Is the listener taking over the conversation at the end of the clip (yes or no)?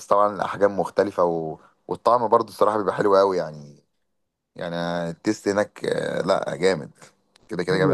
yes